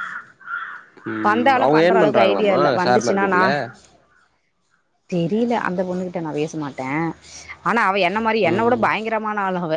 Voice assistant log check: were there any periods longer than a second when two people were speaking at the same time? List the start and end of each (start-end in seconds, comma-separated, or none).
1.3-3.4